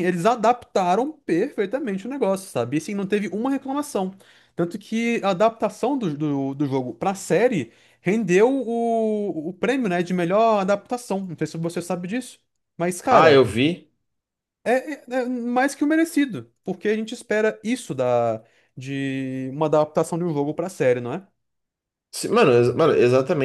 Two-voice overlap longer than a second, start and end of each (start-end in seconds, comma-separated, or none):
none